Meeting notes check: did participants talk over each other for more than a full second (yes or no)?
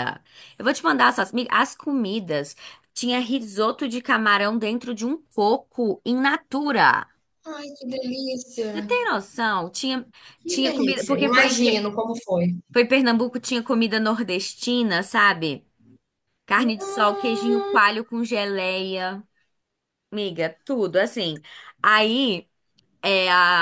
yes